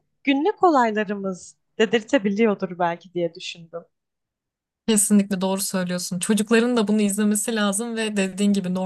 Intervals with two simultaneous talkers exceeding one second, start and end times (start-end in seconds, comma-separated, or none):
none